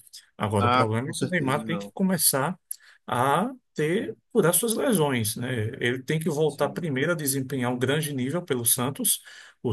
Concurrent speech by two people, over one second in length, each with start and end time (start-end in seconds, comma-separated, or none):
0.6-1.9